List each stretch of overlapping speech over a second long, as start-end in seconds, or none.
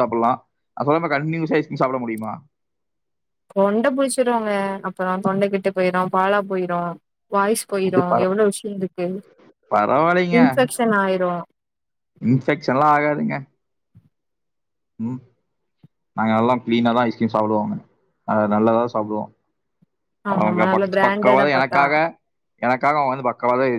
20.3-21.8